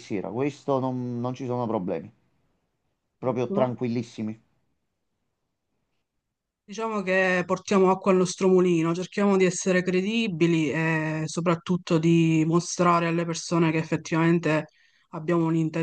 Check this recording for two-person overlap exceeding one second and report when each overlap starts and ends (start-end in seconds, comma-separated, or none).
none